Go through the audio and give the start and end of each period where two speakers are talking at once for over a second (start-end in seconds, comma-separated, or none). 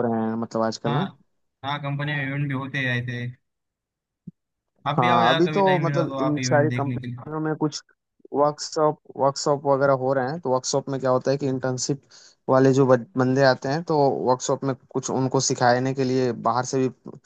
5.0-7.2